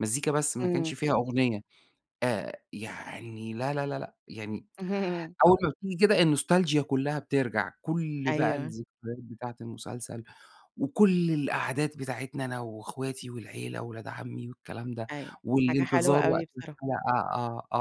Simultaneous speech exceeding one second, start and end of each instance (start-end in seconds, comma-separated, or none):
15.4-16.8